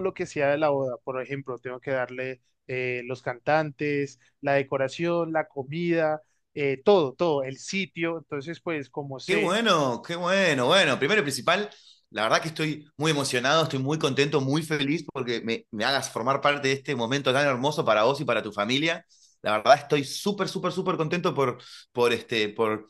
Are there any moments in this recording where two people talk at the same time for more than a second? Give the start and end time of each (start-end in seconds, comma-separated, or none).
none